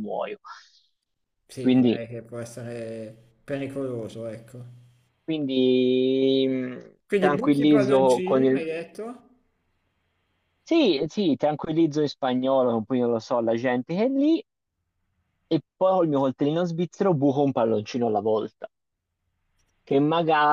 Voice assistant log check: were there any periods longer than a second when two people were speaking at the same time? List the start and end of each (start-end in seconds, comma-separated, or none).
7.0-8.6